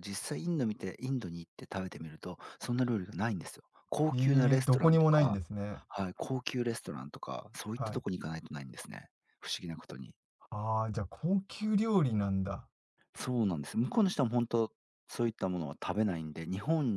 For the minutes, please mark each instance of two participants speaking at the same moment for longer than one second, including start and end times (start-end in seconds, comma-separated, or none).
4.1-5.4